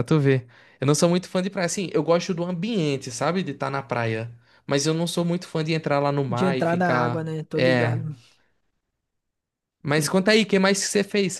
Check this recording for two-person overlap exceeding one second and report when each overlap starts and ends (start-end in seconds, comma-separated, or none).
6.3-8.0